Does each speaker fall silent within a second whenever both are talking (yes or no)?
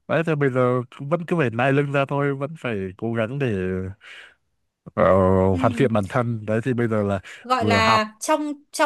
yes